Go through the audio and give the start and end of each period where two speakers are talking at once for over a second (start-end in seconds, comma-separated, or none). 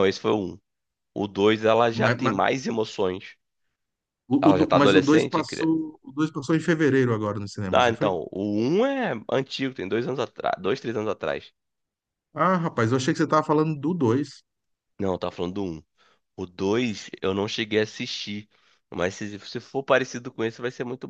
4.4-5.7